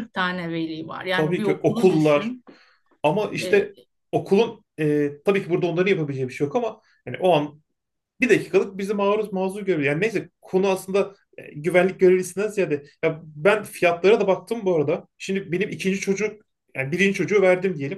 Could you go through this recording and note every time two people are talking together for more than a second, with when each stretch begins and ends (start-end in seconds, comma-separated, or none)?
1.1-2.3